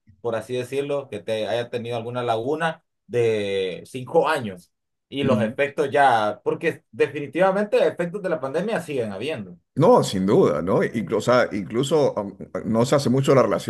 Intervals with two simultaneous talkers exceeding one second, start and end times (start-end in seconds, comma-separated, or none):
none